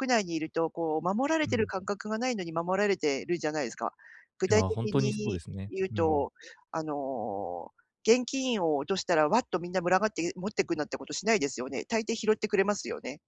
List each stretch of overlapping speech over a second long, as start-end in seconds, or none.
4.5-6.3